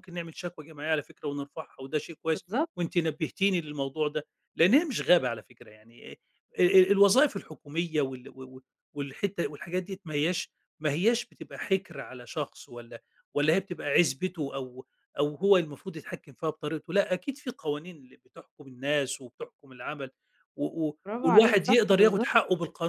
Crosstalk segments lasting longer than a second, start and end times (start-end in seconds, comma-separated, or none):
21.1-22.3